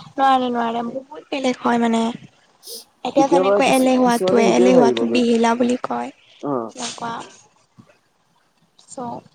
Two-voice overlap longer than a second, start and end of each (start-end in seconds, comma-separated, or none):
3.2-5.0